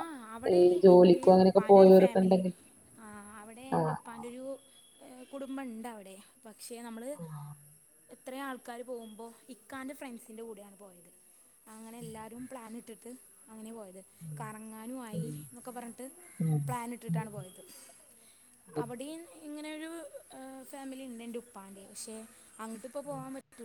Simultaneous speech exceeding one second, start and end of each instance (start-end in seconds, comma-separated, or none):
0.6-2.4